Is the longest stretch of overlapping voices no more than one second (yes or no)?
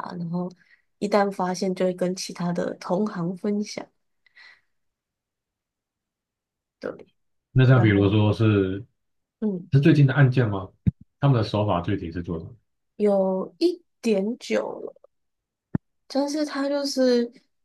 yes